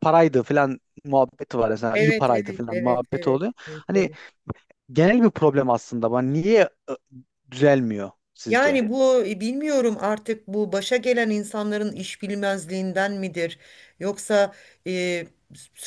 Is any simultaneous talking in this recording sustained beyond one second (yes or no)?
yes